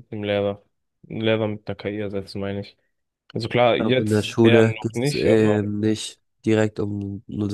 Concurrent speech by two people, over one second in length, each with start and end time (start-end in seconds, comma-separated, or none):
3.8-5.7